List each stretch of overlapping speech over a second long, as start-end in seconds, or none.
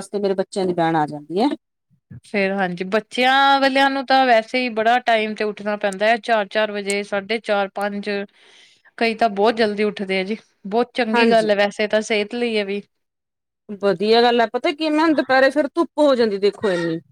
none